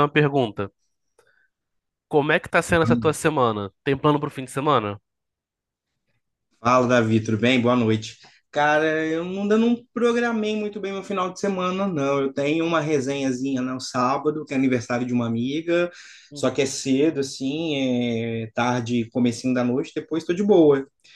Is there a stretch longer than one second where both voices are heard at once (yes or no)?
no